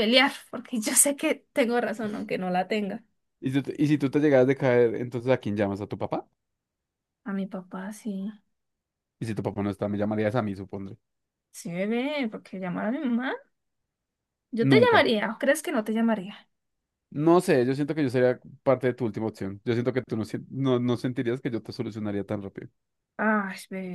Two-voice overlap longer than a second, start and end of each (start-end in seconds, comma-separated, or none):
none